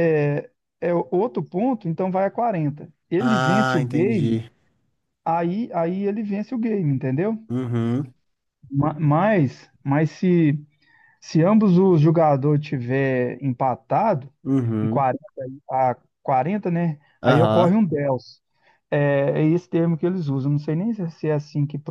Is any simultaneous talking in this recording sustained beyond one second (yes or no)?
yes